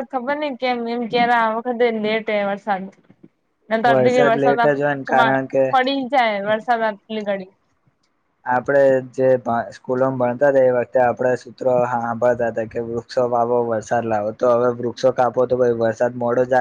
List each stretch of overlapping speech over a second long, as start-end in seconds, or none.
3.9-5.6